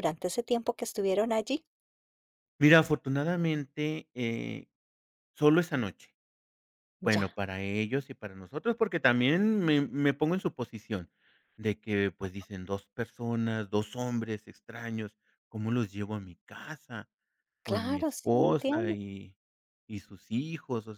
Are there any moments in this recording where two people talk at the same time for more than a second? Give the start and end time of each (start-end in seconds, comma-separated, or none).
17.6-18.9